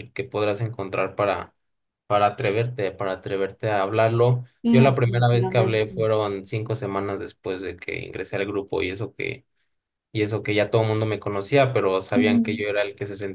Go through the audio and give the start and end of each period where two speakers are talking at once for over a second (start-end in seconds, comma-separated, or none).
4.6-6.1